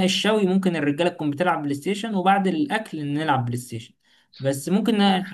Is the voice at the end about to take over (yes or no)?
no